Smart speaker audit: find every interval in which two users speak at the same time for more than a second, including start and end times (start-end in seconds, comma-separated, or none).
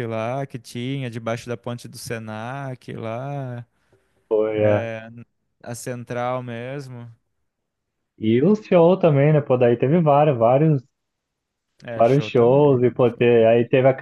12.0-13.5